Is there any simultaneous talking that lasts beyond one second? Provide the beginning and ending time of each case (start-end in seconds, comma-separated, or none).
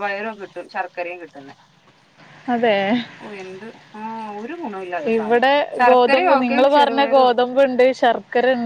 5.1-7.4